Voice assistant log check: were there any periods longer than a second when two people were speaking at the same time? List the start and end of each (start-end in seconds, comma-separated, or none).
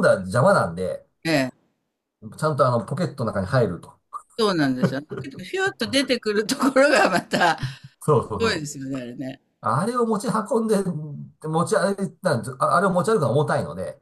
none